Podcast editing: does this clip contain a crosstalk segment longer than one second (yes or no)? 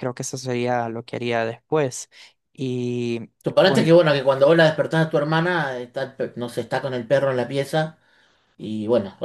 no